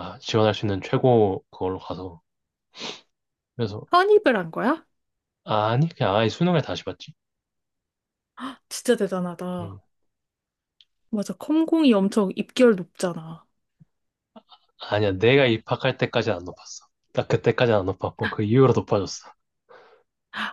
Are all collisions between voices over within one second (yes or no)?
yes